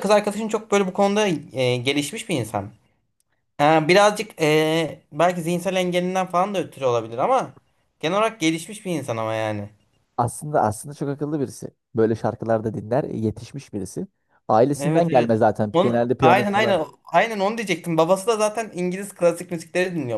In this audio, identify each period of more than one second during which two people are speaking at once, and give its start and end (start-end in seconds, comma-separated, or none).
14.8-16.8